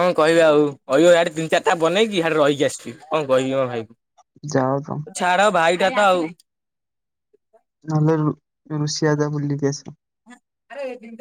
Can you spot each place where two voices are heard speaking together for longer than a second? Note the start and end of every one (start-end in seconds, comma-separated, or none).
none